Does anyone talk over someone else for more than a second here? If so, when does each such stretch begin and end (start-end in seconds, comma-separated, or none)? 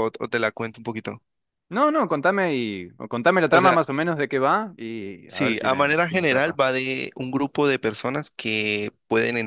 5.3-6.6